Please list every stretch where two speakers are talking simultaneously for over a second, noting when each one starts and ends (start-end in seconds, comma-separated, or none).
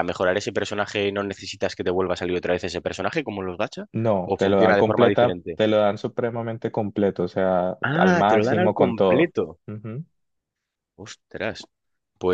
4.2-5.6, 7.9-9.5